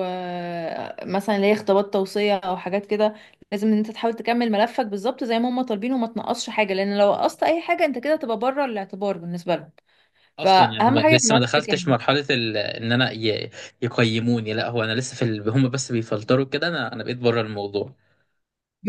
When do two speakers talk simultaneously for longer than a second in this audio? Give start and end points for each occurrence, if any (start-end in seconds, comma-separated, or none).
10.4-11.8